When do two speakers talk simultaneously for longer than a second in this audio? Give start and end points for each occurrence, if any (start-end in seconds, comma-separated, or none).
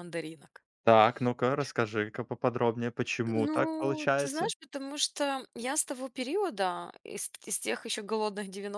3.3-4.5